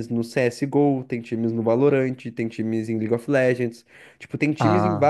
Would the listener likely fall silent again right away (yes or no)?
yes